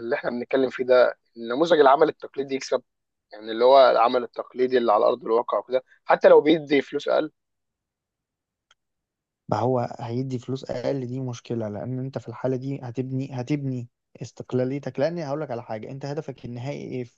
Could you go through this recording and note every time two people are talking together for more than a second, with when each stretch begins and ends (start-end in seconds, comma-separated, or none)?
none